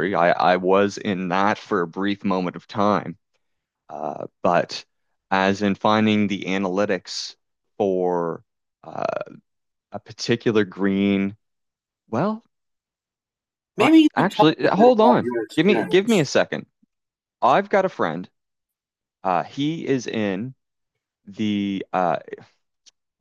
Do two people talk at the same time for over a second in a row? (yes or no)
yes